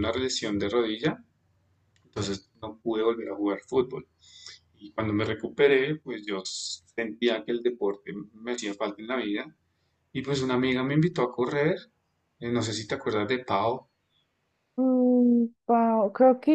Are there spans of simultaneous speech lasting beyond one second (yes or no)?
no